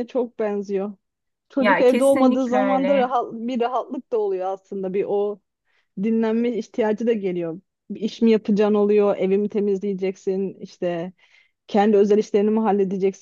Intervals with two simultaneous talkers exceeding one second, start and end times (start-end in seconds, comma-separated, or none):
1.6-3.1